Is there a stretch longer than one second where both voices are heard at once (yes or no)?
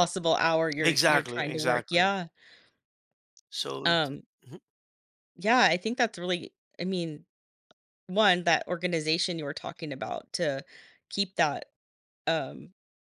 yes